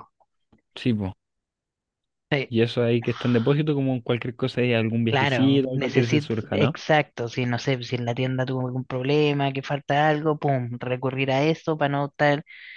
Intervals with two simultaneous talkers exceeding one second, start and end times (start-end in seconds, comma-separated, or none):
5.1-6.8